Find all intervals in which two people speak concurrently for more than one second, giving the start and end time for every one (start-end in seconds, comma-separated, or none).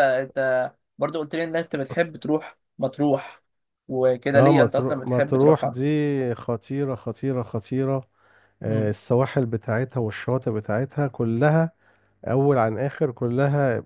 4.3-5.8